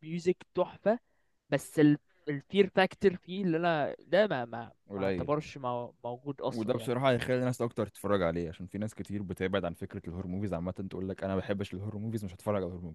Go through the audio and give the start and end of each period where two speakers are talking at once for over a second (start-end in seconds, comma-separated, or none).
none